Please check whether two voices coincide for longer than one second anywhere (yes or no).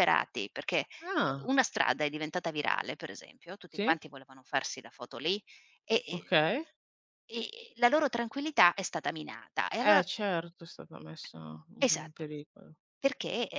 no